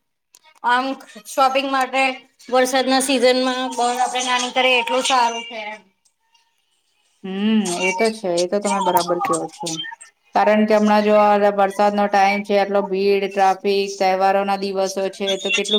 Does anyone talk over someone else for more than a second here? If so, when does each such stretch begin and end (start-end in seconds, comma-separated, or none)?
none